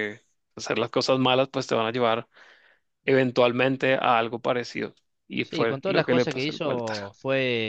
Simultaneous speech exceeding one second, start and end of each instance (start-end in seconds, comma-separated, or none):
5.4-7.0